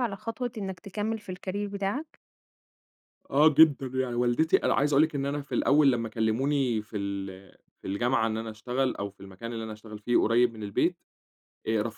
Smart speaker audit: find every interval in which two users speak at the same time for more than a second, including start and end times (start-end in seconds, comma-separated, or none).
none